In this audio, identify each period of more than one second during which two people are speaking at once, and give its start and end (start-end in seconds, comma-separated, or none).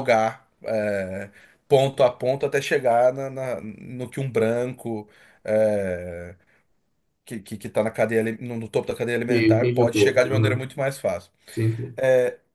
9.3-10.7